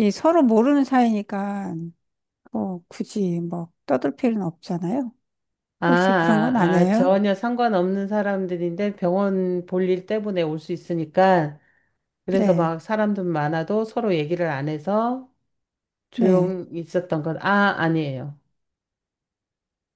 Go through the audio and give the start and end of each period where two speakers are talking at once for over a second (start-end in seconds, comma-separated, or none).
5.9-7.1